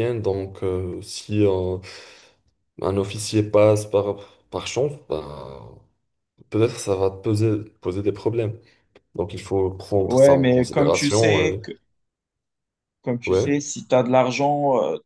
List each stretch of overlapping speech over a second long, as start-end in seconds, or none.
10.0-11.6